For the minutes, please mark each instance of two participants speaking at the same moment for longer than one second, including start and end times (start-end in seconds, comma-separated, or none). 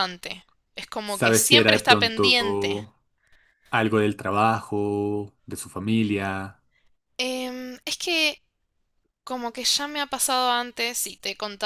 1.0-2.8